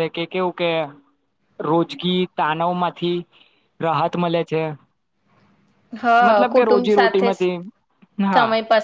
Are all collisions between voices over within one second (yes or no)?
no